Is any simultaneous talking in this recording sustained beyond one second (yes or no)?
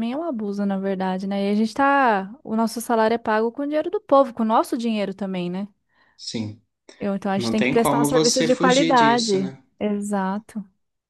yes